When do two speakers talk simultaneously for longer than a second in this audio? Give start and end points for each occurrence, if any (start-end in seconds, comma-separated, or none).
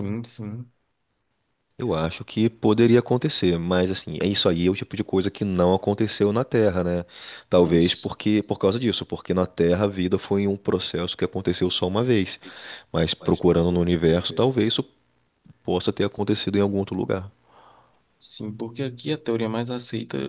none